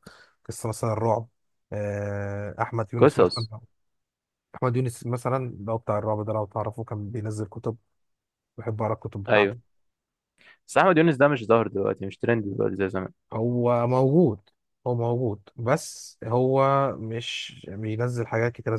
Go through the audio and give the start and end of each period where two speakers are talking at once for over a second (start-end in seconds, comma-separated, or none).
none